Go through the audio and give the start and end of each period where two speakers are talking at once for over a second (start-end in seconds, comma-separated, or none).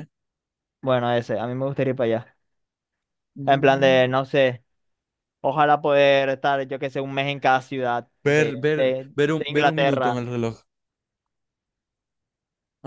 8.2-10.3